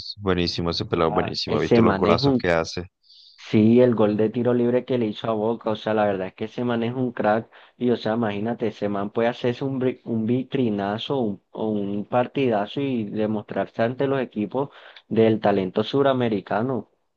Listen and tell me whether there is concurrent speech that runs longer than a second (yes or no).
yes